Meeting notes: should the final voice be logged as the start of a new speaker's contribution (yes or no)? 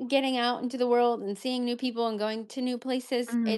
no